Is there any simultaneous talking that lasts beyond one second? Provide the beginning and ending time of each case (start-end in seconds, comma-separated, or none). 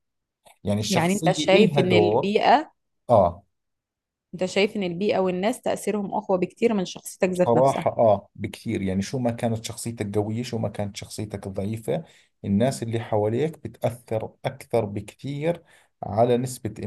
0.9-2.3